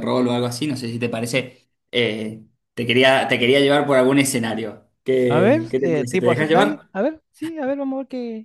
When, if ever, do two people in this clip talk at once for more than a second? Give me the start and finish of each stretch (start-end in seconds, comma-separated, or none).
5.3-6.9